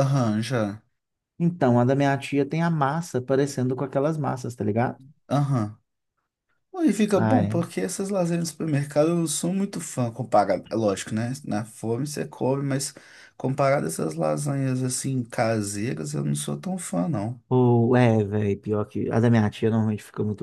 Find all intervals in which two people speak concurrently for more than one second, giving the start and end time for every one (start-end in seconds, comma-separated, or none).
none